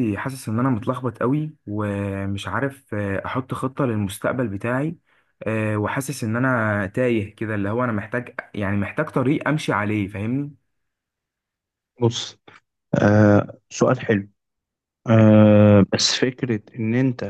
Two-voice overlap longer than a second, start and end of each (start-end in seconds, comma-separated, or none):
none